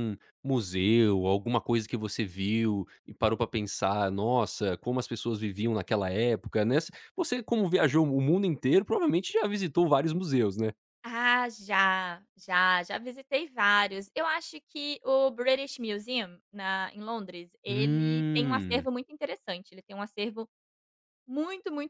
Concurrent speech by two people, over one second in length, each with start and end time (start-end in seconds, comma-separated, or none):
17.7-18.9